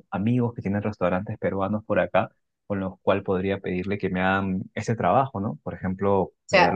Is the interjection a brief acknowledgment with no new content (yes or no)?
no